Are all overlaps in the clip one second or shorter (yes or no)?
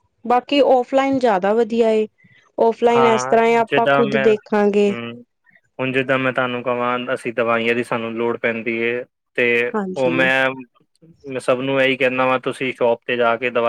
no